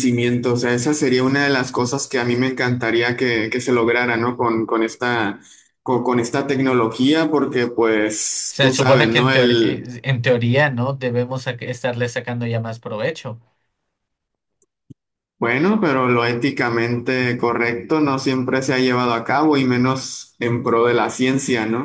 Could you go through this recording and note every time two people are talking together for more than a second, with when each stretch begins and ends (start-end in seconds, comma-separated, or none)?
8.5-9.9